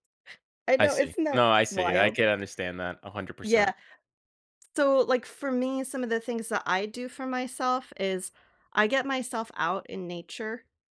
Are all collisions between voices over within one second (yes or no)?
no